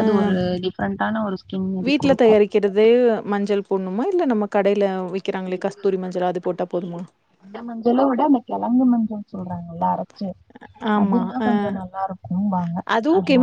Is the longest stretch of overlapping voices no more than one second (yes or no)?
yes